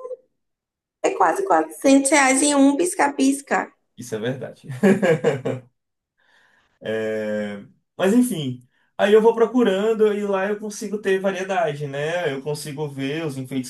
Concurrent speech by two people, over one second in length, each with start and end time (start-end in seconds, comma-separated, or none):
none